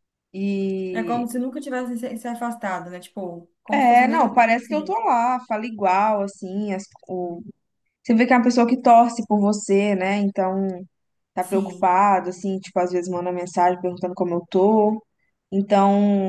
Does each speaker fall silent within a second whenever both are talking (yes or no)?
no